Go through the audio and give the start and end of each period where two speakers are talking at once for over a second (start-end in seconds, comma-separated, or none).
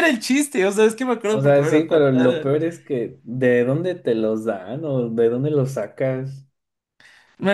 1.3-2.5